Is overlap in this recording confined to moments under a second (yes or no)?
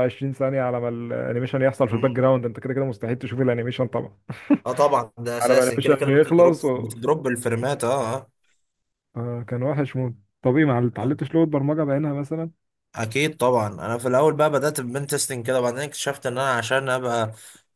no